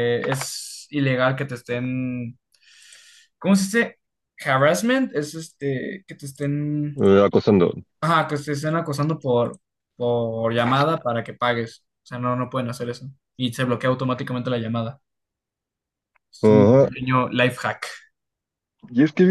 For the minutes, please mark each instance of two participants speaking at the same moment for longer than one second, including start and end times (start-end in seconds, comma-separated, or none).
none